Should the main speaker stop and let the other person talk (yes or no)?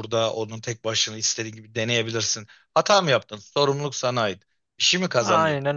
no